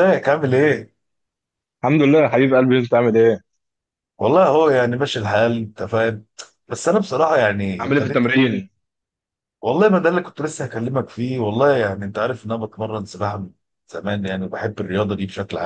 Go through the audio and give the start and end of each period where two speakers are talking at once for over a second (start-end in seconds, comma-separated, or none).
none